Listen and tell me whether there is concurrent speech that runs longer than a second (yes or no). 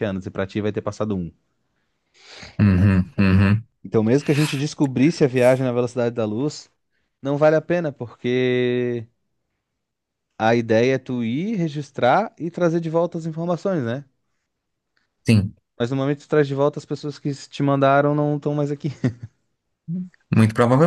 no